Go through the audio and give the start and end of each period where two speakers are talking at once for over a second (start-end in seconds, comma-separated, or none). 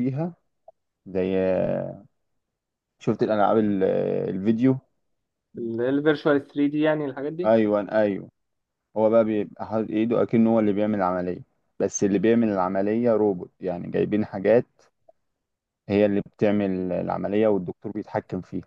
none